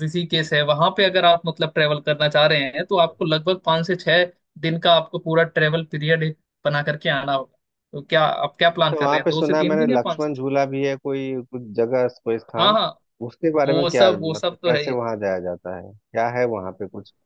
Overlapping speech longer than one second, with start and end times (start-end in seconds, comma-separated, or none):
8.9-10.4, 13.7-14.9